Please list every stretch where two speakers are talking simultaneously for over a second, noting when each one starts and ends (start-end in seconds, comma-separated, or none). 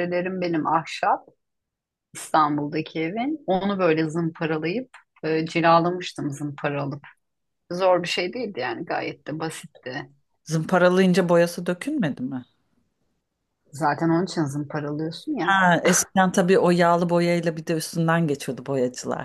none